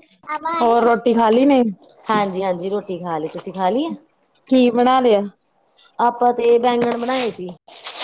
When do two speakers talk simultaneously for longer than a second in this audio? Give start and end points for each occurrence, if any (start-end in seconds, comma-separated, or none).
none